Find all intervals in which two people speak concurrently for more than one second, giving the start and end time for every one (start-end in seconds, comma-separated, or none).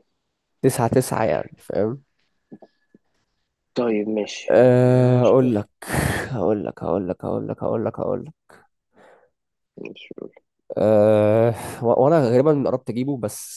4.5-5.7